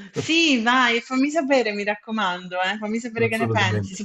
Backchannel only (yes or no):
yes